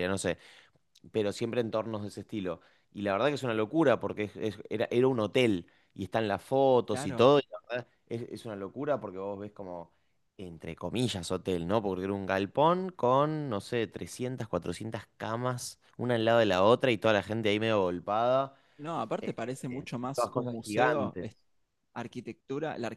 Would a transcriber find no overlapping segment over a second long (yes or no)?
no